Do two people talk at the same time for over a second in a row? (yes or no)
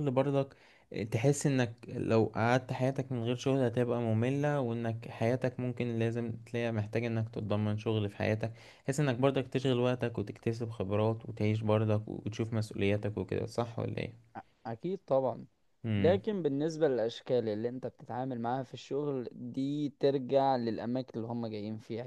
no